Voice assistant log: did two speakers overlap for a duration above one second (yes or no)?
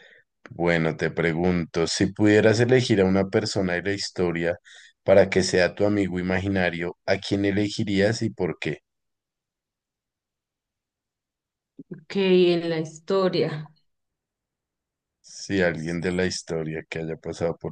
no